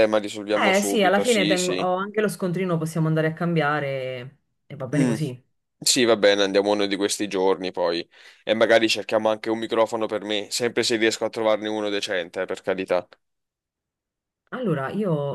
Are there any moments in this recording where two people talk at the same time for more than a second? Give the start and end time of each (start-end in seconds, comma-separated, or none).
0.5-1.9